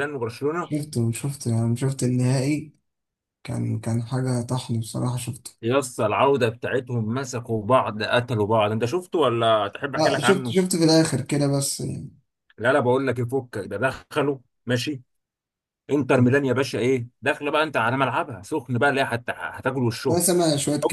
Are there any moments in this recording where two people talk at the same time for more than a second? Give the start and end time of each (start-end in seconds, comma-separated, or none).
none